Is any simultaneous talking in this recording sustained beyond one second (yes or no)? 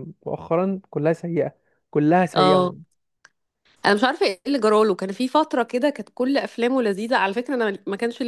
no